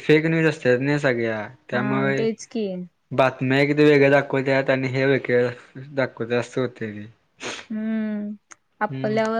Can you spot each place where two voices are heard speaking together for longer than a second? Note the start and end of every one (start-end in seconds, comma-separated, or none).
none